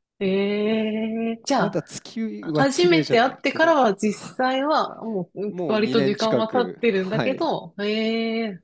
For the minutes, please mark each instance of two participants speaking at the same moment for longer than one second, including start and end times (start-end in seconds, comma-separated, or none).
2.4-3.8, 5.5-7.5